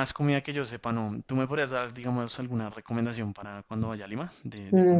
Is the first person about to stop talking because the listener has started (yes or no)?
yes